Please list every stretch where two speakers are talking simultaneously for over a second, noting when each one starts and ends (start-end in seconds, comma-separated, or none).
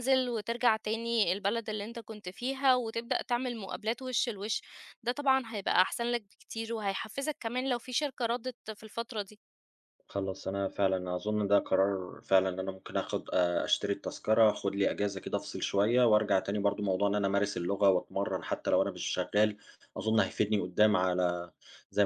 none